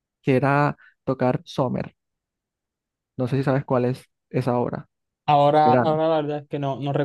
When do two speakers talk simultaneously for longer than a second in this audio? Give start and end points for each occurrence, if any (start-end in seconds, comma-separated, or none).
none